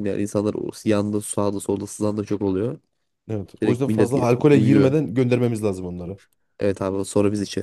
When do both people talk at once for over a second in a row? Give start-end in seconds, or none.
3.6-4.9